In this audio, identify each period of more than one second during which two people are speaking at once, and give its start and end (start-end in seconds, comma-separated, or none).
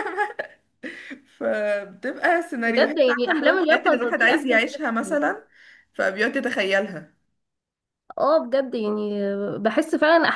2.6-5.2